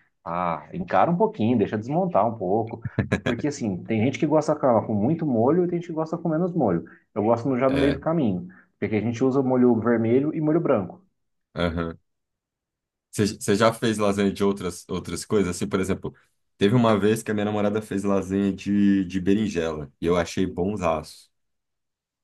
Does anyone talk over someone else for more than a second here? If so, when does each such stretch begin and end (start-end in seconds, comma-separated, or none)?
none